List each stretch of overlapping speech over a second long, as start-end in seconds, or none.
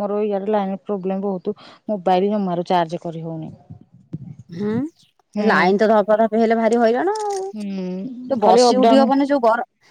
7.5-9.0